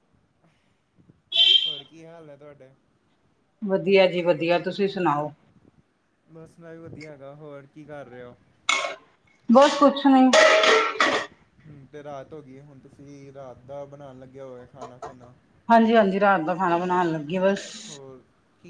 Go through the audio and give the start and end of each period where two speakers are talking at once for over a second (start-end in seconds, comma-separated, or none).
none